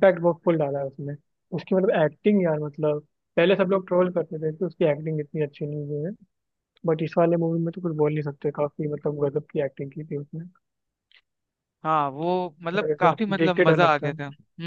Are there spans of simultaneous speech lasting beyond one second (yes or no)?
yes